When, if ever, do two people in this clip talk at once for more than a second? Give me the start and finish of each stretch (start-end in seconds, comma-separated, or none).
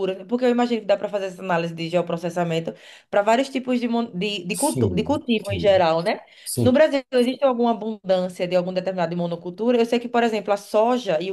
4.5-5.8